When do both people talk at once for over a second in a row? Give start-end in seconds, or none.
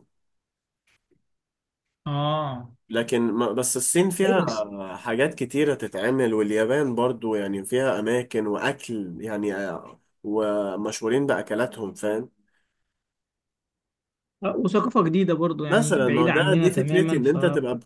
15.7-17.4